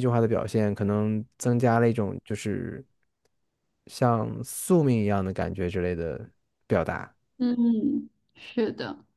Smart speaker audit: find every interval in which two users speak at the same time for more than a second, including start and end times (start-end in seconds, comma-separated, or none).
none